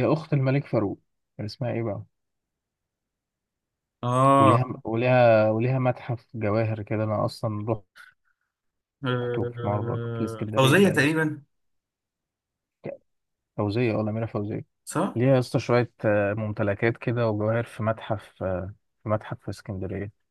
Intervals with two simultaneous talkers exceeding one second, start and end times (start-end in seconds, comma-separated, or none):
9.2-11.1